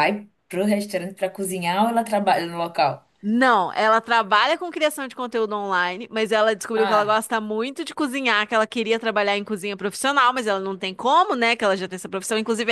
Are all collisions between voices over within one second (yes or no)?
yes